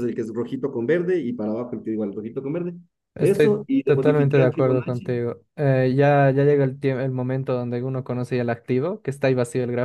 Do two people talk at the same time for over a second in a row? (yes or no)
yes